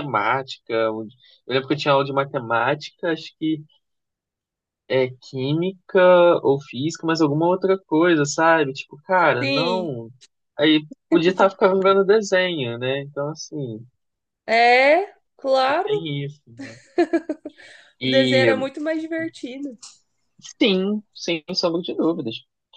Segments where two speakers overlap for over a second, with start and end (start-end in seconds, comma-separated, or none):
none